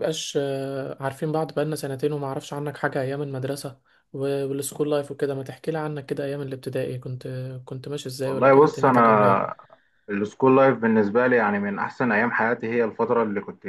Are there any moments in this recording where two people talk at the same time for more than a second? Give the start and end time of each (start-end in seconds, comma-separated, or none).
8.2-9.5